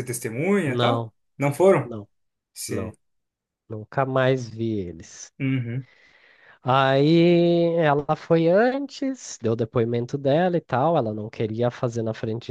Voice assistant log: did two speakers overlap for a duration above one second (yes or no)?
no